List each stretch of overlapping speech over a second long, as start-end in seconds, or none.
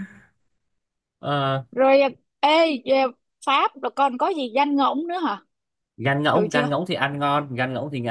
none